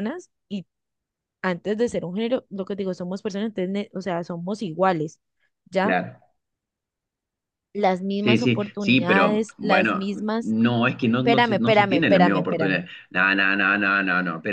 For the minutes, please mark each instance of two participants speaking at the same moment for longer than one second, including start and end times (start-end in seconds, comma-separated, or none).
8.2-10.5, 11.2-12.8